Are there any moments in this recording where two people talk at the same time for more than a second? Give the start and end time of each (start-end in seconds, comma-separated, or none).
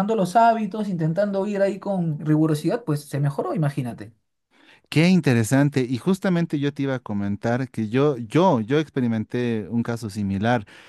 none